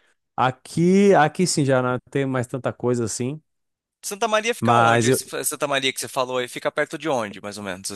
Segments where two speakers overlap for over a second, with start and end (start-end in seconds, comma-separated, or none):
none